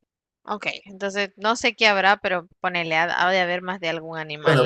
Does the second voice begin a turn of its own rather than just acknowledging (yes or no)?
yes